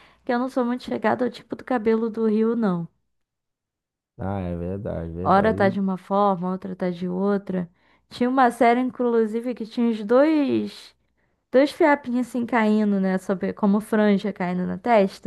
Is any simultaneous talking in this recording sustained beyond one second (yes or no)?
no